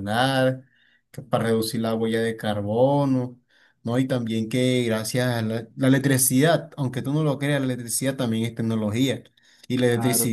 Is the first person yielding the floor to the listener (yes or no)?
no